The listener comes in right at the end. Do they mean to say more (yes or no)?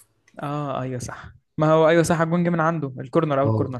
yes